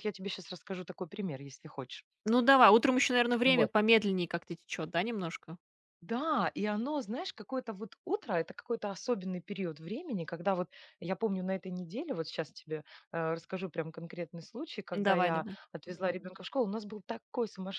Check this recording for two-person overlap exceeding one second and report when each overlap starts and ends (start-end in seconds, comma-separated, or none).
none